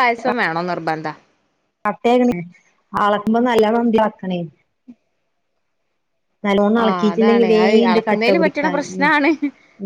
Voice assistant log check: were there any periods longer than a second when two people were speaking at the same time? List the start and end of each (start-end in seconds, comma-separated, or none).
6.8-9.1